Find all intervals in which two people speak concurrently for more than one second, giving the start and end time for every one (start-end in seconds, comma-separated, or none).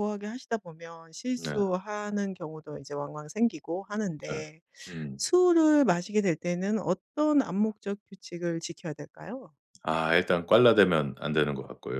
none